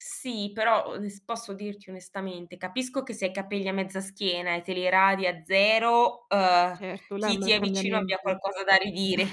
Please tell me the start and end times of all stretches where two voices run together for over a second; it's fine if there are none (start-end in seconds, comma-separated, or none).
6.5-8.4